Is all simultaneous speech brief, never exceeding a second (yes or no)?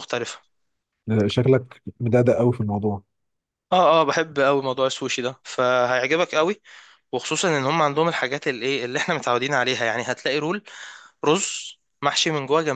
yes